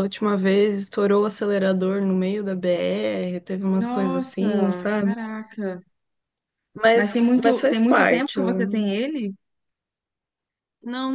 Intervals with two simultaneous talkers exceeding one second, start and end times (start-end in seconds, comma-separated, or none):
3.8-5.2, 6.9-8.9